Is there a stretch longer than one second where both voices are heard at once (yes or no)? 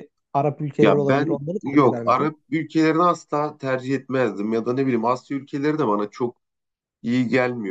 yes